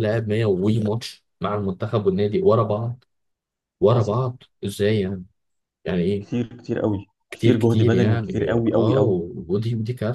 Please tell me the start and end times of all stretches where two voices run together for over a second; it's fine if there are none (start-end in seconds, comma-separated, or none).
7.3-9.2